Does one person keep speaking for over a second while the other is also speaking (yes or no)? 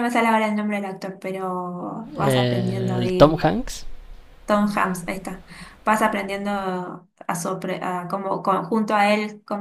yes